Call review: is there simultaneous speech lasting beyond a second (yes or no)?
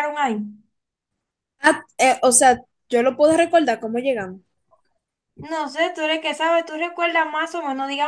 no